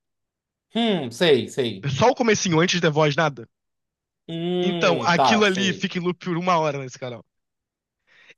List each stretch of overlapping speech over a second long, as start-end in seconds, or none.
4.6-5.9